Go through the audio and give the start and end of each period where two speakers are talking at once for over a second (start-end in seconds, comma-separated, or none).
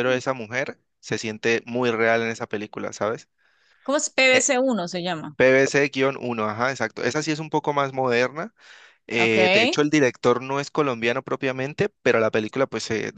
none